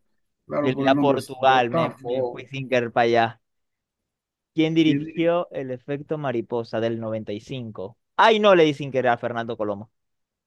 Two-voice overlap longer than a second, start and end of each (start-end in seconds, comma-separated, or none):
0.6-2.5